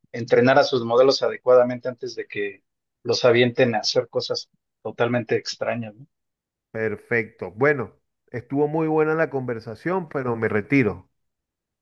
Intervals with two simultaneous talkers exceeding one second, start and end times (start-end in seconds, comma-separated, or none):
none